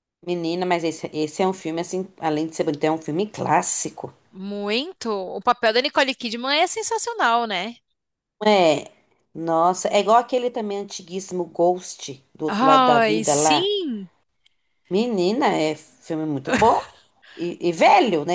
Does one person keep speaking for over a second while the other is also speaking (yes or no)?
yes